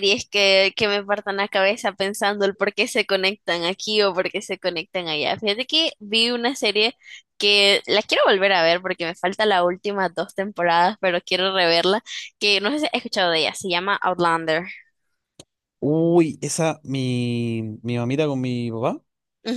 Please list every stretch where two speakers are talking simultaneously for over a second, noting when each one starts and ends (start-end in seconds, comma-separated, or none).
none